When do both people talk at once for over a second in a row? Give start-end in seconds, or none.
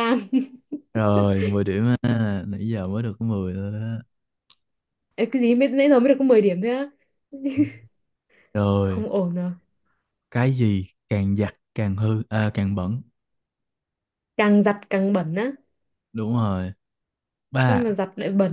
none